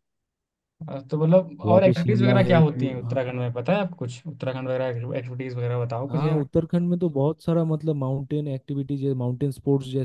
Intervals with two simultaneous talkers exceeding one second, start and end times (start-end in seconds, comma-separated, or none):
1.6-3.2